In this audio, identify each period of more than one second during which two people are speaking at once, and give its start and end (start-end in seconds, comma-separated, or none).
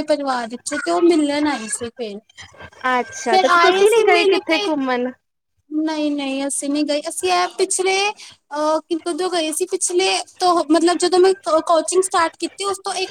none